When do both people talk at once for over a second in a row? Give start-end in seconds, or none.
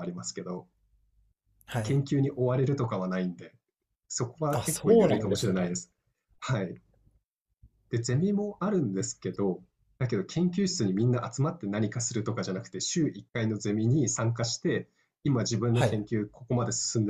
4.5-5.7